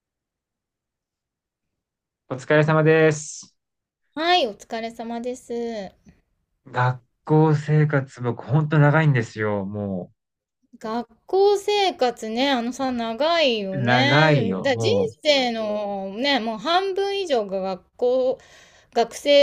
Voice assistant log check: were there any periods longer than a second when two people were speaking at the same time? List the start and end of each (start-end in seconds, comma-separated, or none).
13.7-15.1